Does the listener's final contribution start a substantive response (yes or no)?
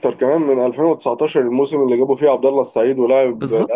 yes